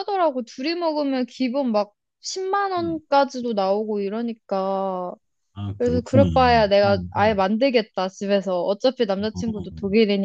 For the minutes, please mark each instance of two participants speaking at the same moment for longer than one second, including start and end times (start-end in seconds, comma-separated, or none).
5.8-7.4